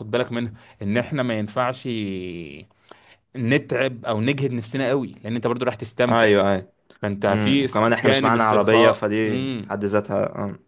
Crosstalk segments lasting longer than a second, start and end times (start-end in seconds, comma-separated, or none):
7.3-9.7